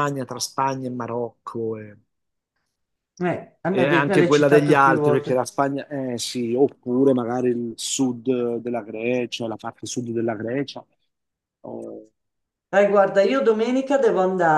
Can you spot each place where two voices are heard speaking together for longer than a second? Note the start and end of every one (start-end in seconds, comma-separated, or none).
3.7-5.4